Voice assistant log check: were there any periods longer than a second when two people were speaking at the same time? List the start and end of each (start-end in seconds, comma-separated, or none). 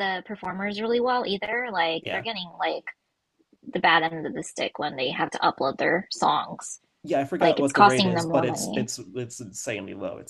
7.4-8.9